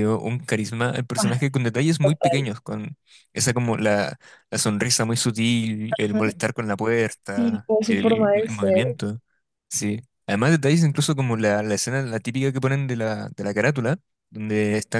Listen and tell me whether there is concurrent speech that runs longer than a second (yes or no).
yes